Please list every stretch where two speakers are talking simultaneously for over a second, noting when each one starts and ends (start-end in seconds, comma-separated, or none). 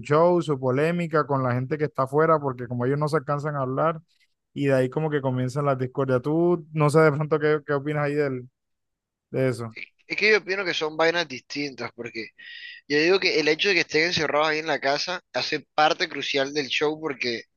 none